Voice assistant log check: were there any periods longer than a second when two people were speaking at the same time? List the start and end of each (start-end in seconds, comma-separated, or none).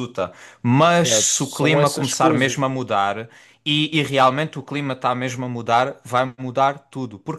0.8-2.6